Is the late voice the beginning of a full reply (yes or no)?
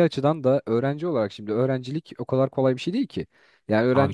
no